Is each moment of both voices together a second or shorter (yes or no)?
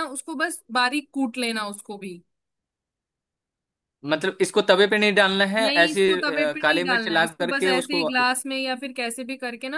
no